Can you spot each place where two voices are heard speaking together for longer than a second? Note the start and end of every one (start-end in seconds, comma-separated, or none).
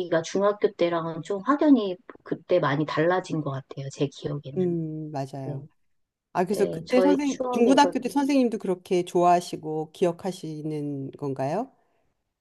6.5-8.2